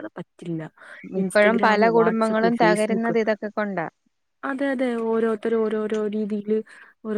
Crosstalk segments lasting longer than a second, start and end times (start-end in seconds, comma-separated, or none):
1.2-3.1